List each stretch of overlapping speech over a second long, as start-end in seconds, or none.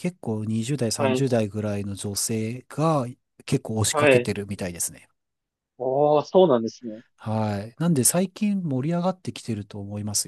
none